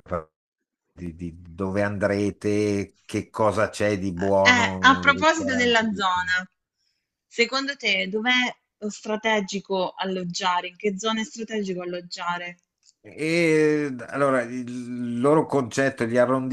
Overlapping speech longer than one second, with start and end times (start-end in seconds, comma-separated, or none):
4.4-5.9